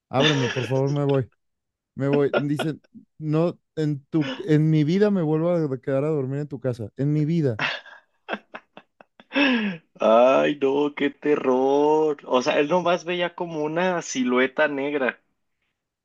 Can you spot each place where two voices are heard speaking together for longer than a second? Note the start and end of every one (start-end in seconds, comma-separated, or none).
none